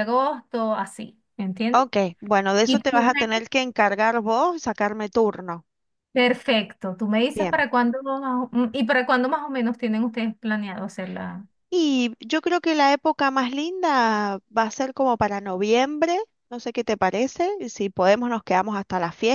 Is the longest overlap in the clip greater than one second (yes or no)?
no